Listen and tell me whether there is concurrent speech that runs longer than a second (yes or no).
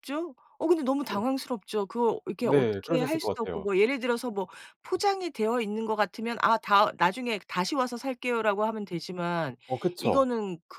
yes